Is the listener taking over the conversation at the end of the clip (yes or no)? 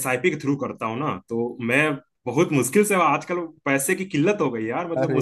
no